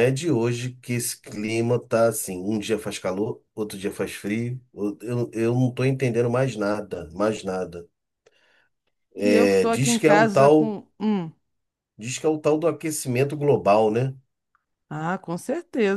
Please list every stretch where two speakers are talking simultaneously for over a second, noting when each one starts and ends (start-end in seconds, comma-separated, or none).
9.2-10.8